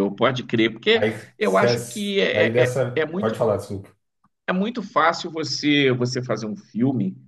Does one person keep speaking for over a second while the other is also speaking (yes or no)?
yes